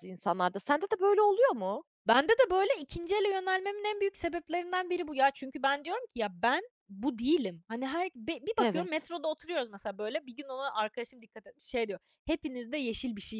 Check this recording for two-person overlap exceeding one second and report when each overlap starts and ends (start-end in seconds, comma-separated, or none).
none